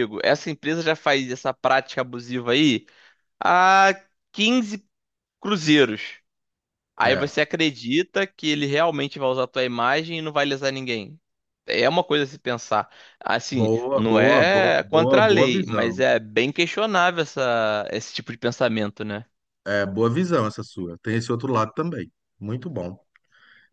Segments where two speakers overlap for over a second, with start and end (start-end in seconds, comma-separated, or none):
13.5-16.0